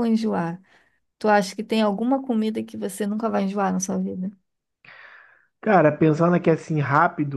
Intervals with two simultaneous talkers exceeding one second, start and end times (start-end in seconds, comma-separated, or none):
none